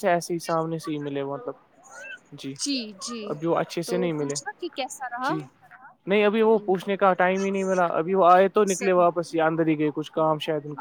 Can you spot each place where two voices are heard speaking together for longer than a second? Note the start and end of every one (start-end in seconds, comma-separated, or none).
none